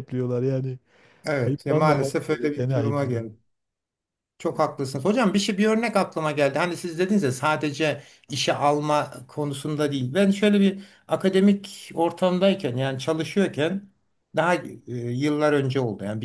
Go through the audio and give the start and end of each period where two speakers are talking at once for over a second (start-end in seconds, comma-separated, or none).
1.5-3.3